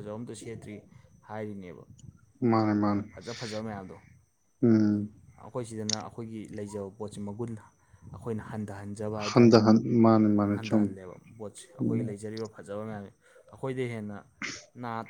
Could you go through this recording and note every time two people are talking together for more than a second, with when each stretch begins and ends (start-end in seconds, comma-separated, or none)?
none